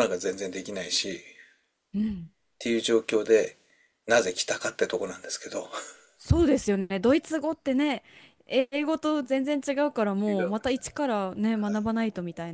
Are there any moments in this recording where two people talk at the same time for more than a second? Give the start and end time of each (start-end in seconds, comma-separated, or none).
none